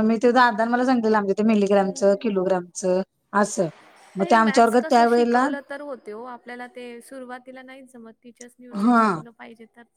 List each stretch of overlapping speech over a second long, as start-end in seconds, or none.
4.2-5.5